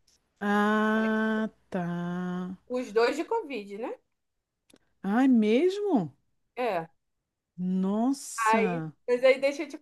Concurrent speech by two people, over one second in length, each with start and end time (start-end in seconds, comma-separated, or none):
none